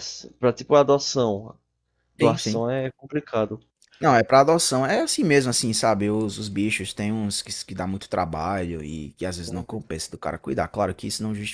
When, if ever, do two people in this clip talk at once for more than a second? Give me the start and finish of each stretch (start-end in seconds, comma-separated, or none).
none